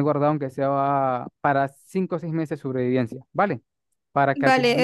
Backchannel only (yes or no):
no